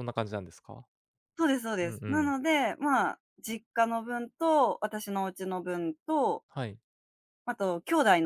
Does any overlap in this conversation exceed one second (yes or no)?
no